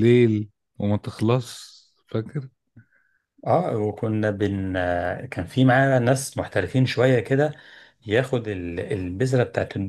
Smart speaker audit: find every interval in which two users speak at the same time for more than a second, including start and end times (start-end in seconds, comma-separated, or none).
none